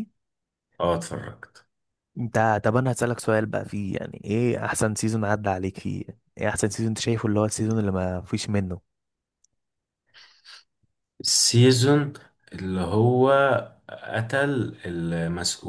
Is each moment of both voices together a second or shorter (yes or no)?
yes